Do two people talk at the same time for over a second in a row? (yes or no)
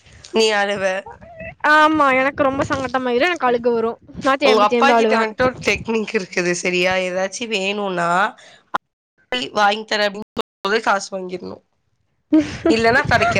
no